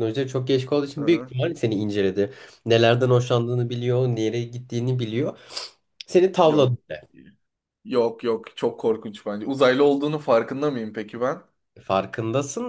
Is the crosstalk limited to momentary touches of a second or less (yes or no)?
yes